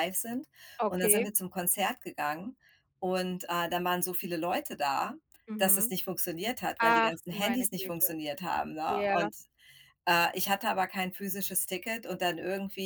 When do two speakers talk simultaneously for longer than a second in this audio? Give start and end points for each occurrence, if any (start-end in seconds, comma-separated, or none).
6.8-8.2